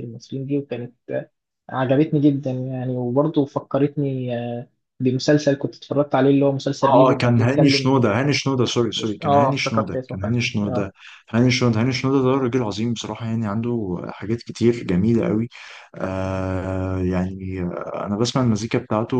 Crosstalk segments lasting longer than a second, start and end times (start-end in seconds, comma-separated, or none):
6.8-8.0, 9.0-10.9